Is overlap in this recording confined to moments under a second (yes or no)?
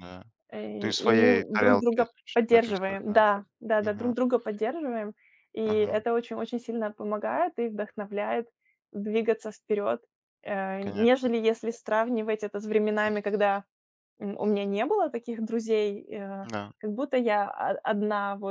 no